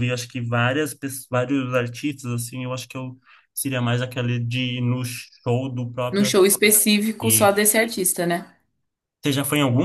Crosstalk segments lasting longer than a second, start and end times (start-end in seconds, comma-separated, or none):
none